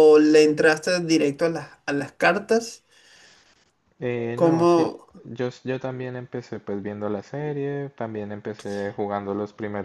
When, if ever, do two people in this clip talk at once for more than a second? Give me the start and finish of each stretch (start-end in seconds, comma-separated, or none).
none